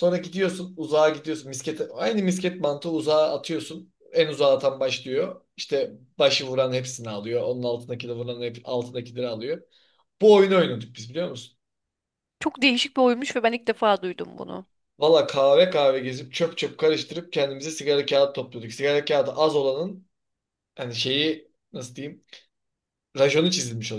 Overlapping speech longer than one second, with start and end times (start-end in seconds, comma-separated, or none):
none